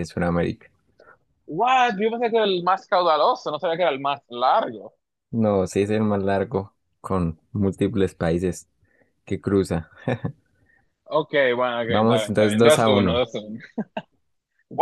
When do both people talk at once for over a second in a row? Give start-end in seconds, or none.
11.8-13.2